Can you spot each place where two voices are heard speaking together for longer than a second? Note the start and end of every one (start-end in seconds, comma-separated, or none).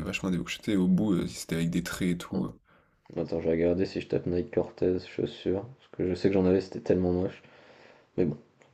none